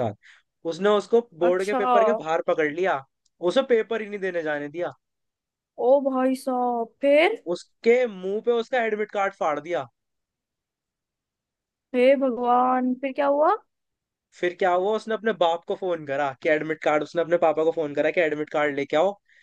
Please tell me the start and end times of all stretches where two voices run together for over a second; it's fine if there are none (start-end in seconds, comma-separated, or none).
none